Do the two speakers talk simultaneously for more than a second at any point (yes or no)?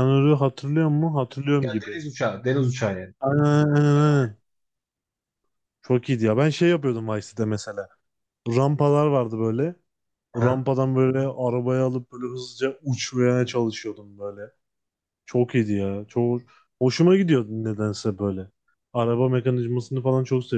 no